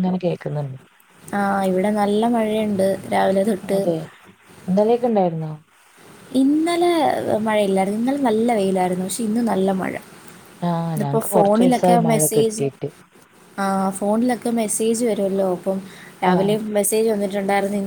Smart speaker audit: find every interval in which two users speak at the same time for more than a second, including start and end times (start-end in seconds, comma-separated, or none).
11.0-12.6